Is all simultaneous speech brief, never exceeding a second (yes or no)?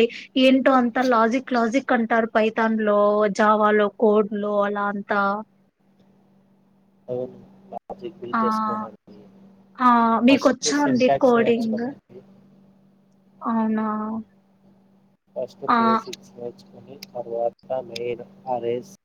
no